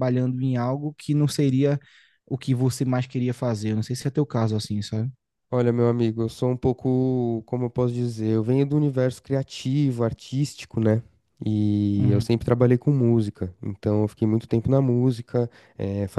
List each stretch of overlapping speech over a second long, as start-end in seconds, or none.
none